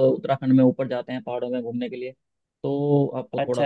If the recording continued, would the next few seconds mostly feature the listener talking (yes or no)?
no